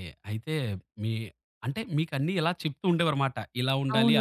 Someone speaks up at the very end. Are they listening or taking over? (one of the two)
taking over